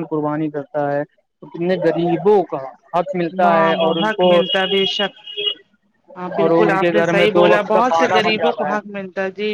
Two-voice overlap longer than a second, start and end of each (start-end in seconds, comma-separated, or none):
6.4-8.7